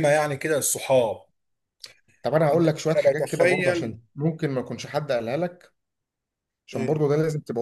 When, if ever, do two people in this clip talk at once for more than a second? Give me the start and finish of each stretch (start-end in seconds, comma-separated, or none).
2.5-3.9